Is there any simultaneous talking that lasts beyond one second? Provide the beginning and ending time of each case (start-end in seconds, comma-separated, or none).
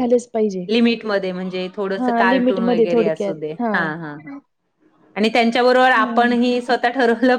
2.0-3.4